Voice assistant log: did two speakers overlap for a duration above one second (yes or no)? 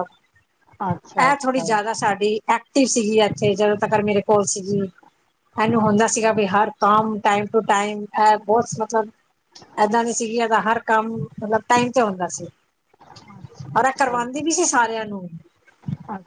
no